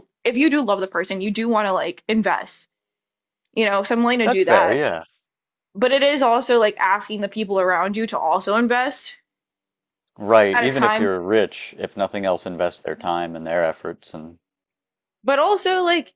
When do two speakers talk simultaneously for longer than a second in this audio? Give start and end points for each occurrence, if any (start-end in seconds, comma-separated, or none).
none